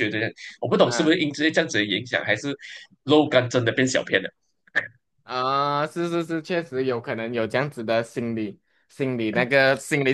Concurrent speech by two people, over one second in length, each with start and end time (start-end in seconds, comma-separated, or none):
none